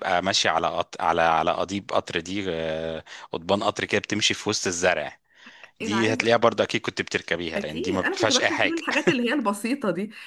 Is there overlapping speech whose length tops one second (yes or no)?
yes